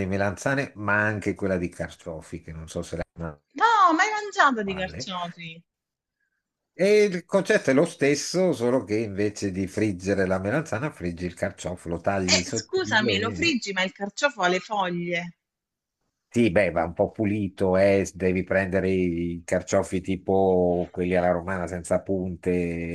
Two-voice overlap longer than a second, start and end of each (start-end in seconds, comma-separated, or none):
12.2-13.6